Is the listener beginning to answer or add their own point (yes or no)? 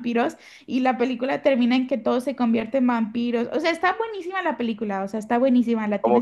yes